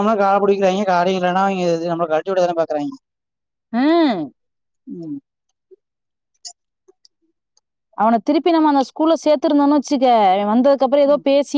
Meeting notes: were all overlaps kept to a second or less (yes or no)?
yes